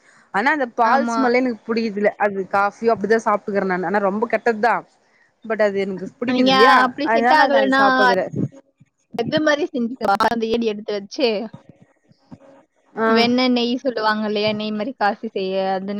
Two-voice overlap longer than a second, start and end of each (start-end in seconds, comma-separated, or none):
none